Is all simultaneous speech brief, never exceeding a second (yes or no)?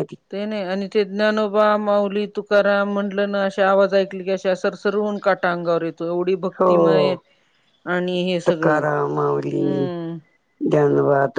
no